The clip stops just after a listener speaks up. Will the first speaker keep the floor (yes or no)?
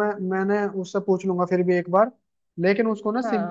yes